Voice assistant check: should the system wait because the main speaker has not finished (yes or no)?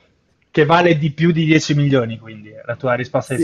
no